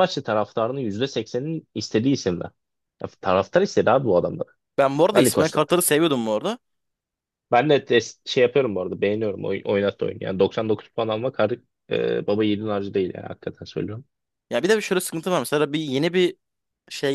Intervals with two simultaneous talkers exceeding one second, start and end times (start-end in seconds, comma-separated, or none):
none